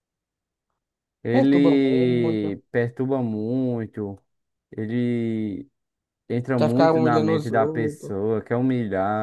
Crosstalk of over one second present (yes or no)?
yes